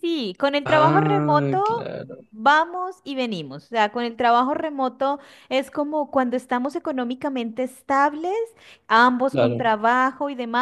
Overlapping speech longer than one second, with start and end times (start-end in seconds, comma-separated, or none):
0.6-1.9